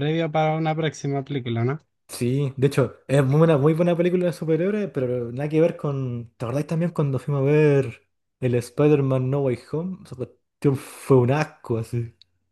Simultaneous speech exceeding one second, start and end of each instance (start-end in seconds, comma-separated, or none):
none